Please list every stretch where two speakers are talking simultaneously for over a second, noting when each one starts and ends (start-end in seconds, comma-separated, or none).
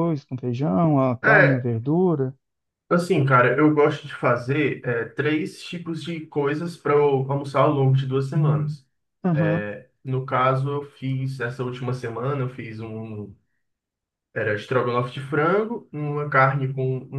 none